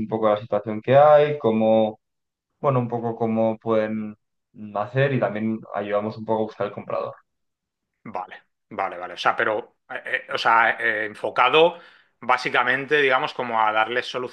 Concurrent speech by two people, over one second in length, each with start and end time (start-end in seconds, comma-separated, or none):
none